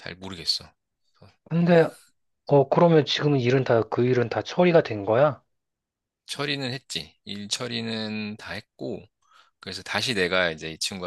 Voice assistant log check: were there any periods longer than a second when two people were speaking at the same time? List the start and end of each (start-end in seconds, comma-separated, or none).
none